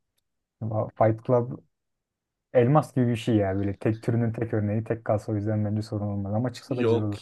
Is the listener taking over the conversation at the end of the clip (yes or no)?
yes